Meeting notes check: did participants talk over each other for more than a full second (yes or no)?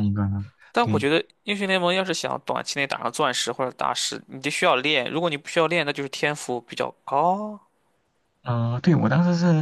no